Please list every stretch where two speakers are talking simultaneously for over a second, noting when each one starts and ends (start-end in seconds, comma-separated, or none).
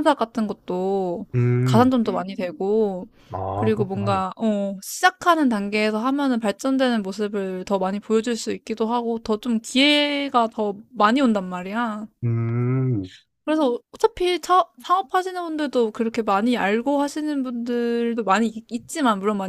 none